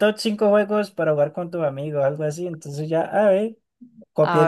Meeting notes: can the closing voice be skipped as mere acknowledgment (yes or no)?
yes